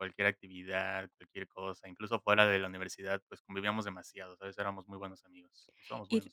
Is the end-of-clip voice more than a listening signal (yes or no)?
yes